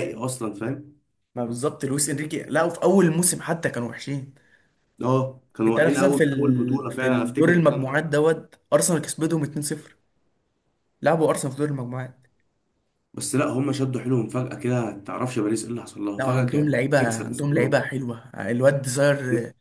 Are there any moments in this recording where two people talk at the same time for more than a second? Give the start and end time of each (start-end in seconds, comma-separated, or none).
5.7-8.0, 16.2-17.8